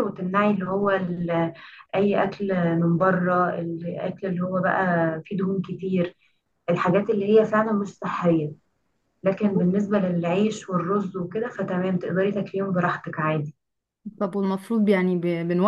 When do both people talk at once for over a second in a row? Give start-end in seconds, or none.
none